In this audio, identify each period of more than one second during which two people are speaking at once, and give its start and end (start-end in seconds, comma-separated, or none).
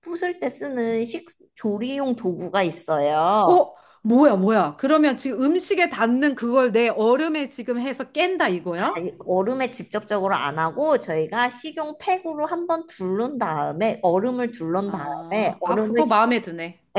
14.9-16.3